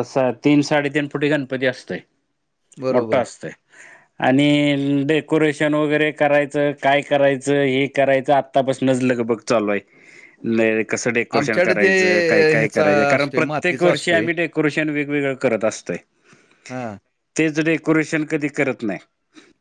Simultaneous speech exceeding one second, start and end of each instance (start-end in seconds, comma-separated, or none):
12.5-14.2